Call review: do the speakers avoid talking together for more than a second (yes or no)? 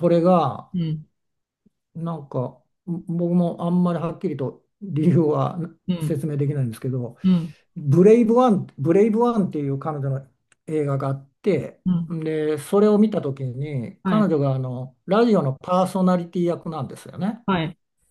yes